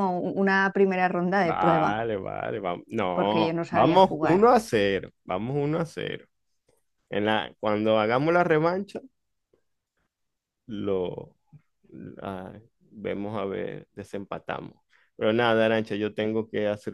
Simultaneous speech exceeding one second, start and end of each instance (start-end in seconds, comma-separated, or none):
3.1-4.4